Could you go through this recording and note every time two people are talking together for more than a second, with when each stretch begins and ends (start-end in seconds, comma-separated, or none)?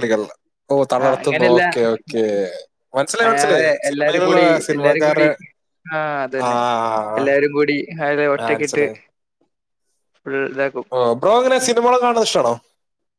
3.3-5.2